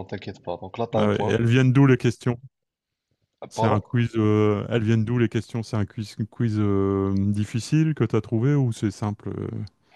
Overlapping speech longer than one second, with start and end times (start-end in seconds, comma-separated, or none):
none